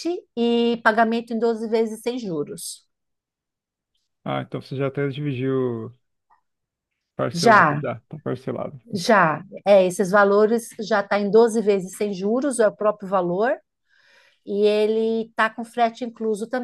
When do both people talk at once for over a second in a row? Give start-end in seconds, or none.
none